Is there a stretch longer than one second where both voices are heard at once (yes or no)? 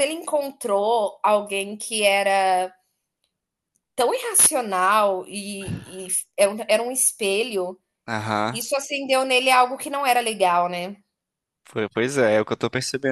no